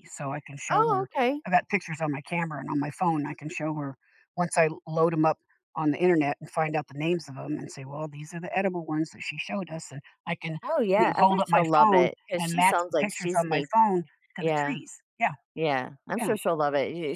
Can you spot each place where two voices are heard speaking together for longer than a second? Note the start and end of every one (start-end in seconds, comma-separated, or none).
10.9-13.7